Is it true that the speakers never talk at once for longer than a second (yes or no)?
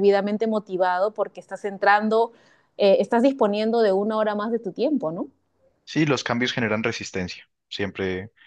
yes